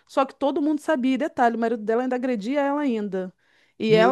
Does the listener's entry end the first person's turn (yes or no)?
no